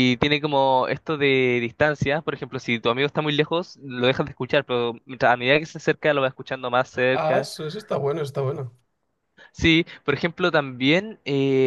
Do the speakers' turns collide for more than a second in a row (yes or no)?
no